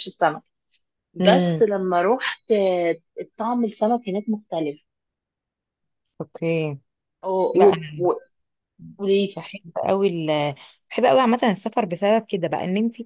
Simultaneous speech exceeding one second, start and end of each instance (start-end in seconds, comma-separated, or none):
none